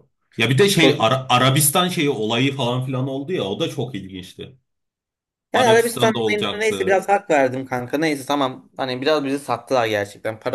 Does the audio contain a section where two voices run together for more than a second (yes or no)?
yes